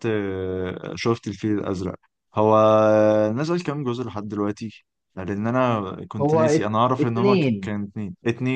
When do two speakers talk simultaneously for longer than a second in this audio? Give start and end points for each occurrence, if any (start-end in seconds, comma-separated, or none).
6.2-7.7